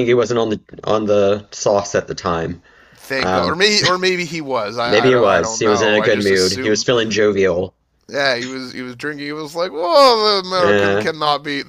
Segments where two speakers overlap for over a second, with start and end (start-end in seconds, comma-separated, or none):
4.8-6.9